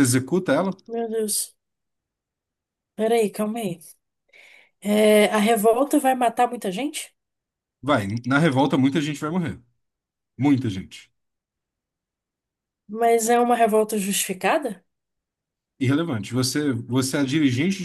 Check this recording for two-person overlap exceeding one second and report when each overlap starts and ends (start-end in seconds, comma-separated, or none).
none